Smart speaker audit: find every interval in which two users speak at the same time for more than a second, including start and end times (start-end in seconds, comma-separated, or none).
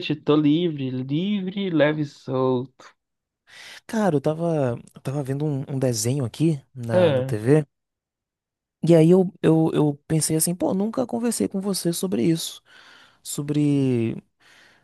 none